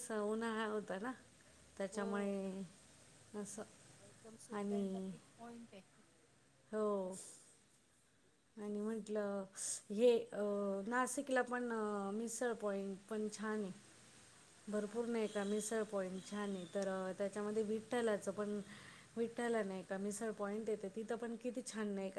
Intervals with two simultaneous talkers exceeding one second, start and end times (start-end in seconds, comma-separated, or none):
none